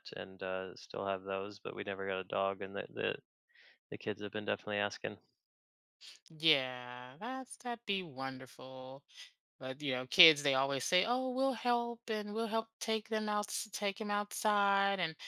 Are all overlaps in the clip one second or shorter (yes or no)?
yes